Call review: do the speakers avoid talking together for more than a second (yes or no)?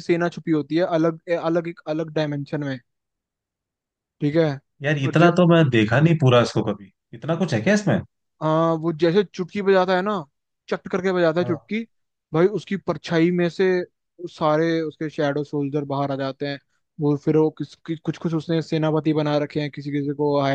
yes